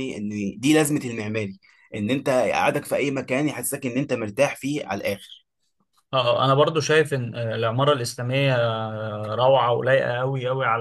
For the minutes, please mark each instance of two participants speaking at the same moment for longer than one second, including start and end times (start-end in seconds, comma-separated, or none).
none